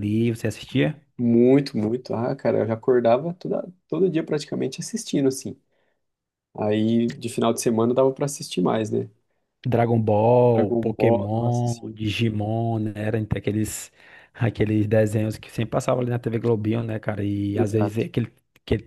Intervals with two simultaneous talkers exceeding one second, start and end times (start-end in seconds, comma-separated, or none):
10.5-12.0